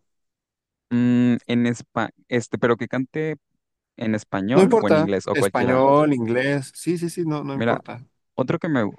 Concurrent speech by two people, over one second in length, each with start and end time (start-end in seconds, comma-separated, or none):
4.5-5.8